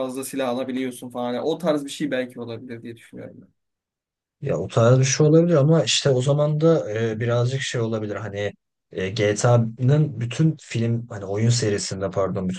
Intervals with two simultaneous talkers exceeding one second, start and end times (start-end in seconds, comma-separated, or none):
none